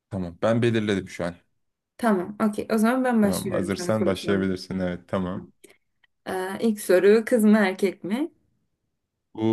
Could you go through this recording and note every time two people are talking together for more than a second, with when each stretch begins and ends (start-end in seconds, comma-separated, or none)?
3.2-4.5